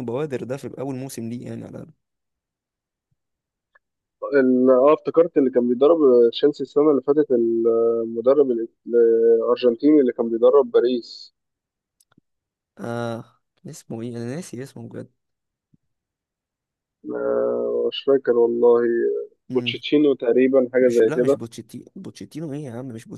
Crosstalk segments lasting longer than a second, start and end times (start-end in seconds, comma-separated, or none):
none